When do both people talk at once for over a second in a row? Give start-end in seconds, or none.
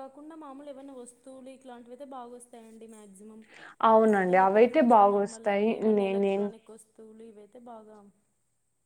4.1-6.5